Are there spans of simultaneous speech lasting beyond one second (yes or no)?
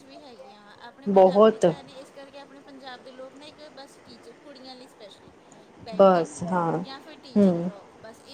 no